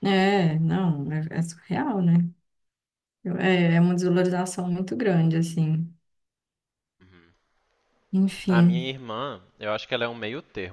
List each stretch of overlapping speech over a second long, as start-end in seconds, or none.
none